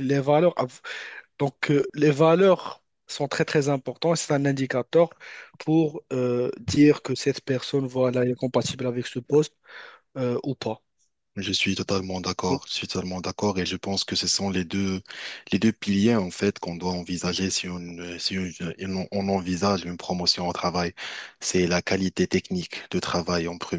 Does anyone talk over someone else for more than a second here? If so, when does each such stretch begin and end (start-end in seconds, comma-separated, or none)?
none